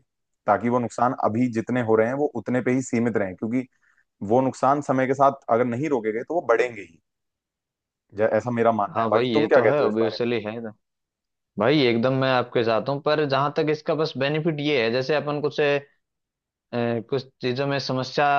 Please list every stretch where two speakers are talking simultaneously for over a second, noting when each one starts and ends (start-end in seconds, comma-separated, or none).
9.0-10.3